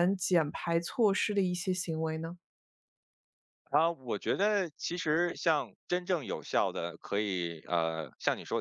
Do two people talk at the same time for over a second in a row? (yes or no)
no